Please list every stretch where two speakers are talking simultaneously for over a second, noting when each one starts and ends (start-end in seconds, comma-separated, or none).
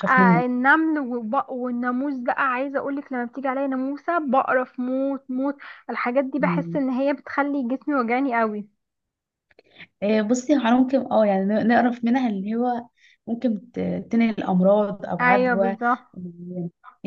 none